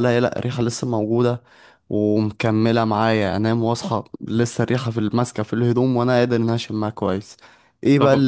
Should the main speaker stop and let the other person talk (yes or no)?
no